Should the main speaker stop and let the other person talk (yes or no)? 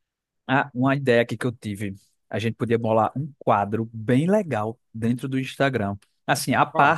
no